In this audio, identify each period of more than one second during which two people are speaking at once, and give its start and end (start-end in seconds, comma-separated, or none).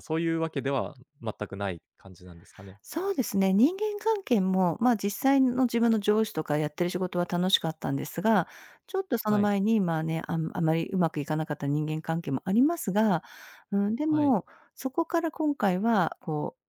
none